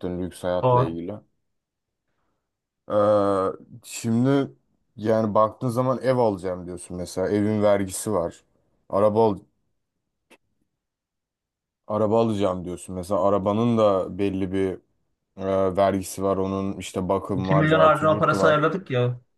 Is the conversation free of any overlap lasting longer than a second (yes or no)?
no